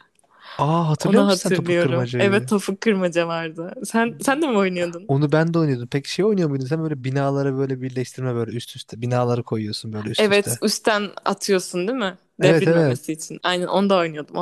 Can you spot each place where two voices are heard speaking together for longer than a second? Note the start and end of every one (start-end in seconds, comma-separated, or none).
1.0-2.5